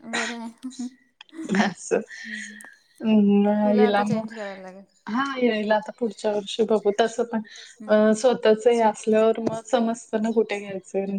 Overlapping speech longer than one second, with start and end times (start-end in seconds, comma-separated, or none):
none